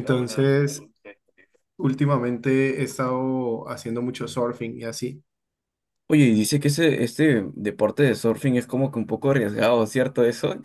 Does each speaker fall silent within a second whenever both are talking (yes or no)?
yes